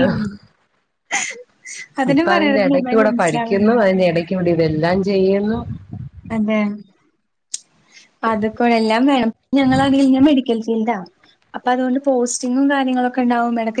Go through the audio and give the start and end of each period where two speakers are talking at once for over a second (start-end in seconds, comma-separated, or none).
2.1-3.8